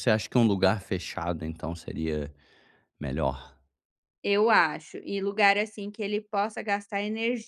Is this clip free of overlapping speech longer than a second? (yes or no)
yes